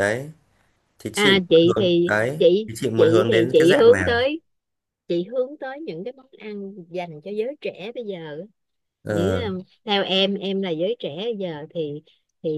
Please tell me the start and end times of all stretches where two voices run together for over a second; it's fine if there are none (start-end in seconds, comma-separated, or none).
1.1-4.1